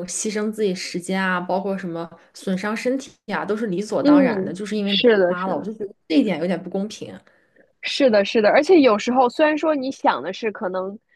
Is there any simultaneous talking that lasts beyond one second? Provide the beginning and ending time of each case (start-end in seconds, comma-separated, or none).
4.0-5.7